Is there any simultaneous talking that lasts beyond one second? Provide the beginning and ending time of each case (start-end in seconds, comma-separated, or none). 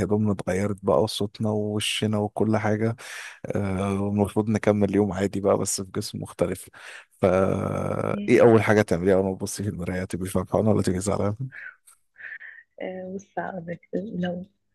none